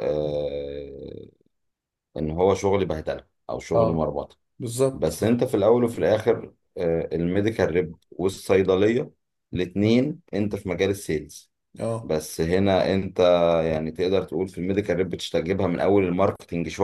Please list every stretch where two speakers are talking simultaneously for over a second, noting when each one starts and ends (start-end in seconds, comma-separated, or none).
none